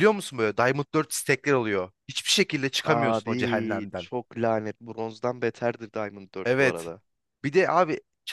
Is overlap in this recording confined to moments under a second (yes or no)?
no